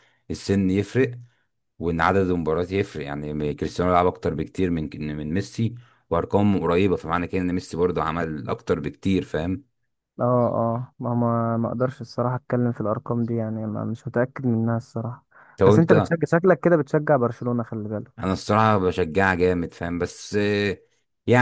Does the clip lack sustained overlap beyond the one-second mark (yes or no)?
yes